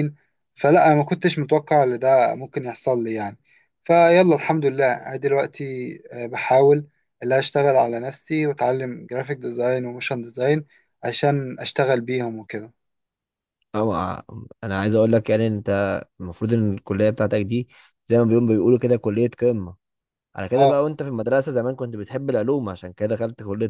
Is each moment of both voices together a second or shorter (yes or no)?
yes